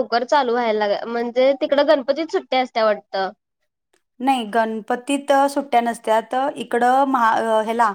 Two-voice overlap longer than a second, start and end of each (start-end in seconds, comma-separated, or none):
none